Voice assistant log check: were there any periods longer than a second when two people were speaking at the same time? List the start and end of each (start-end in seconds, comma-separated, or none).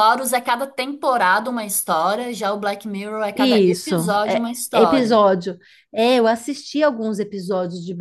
3.4-5.2